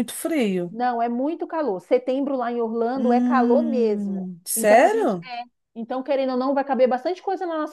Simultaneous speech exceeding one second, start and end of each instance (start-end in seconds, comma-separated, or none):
2.9-5.2